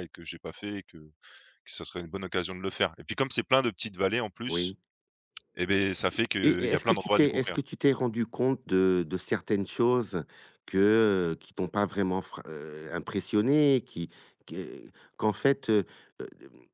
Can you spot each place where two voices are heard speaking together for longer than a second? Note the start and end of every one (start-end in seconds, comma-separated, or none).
6.1-7.6